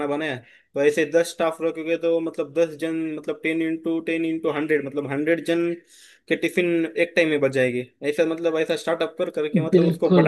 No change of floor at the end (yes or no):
no